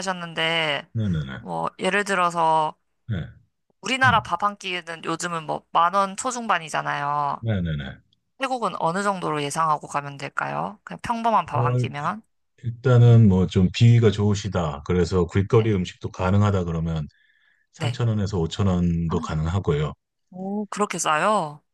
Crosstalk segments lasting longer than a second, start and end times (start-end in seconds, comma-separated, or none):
none